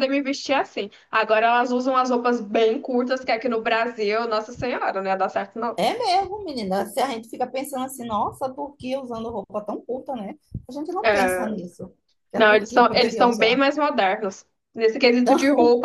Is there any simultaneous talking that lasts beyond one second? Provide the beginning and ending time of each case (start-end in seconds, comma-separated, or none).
12.3-13.6